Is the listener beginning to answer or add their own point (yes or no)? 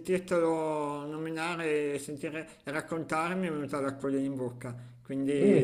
yes